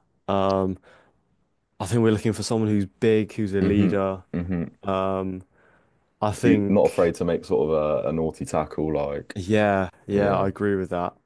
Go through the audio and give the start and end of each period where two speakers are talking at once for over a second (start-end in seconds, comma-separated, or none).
none